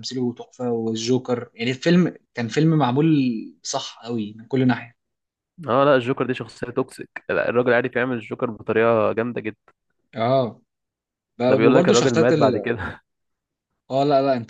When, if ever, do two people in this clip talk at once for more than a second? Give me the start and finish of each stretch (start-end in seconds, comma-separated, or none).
11.5-12.7